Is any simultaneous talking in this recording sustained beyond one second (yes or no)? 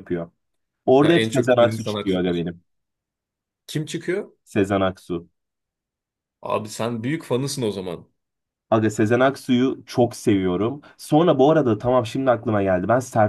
yes